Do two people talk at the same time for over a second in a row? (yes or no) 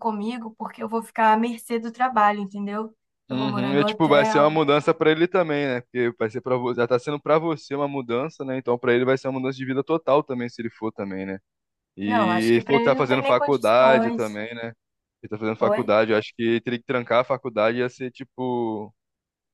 yes